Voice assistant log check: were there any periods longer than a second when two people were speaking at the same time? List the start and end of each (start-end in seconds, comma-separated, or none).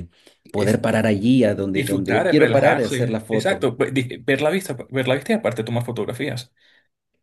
1.8-3.7